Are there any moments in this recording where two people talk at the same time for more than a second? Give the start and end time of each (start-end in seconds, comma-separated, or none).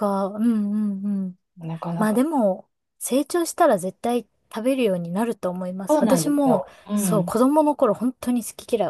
5.9-7.3